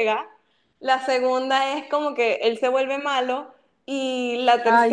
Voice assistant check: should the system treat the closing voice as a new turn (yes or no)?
no